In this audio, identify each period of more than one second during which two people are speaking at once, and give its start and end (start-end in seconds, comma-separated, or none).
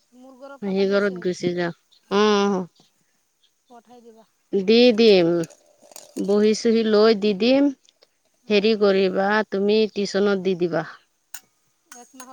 none